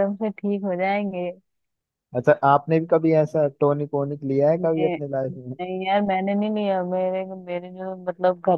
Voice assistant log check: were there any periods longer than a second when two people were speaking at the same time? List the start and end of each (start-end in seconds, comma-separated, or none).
none